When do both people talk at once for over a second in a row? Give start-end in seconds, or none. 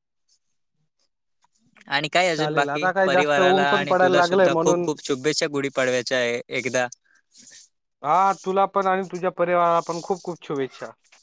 2.4-4.9